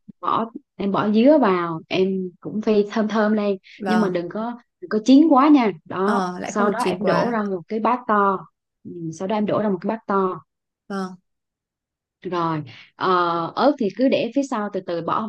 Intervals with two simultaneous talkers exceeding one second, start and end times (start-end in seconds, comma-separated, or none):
6.0-7.4